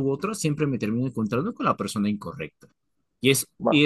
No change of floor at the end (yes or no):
yes